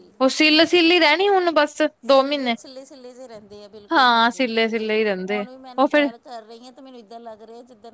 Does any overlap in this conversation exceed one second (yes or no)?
yes